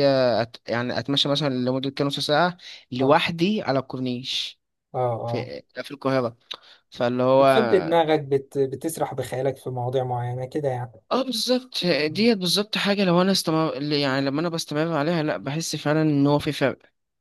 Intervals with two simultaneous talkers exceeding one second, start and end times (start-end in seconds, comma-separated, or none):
none